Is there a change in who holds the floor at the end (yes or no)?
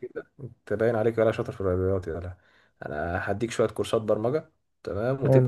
no